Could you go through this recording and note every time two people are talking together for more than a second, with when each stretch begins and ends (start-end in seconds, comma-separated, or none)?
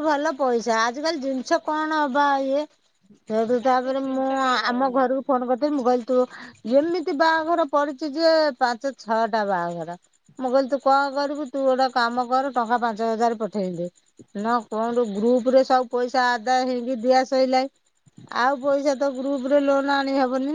3.7-5.2